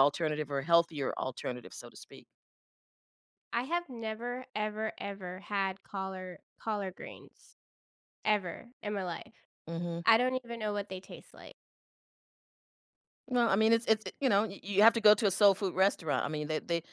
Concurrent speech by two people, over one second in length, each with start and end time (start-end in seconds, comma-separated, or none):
none